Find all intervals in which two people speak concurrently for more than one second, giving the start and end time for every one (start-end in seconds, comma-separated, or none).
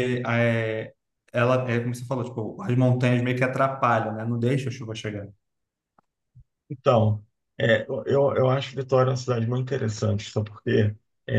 none